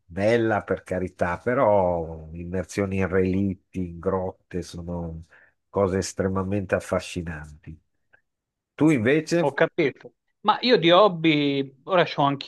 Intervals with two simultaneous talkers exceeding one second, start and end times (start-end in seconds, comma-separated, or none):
none